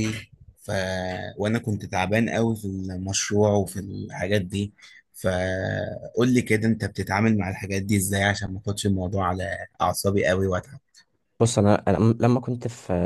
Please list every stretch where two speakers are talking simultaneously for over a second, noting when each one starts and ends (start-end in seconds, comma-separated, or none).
none